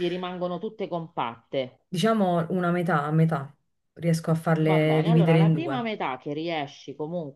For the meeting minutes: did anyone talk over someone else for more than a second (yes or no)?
yes